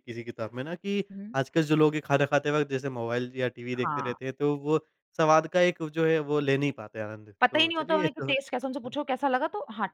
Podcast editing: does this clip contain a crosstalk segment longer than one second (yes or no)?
yes